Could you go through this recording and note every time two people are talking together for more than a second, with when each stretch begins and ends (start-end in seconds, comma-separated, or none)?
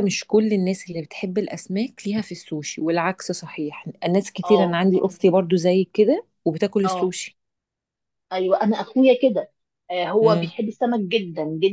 none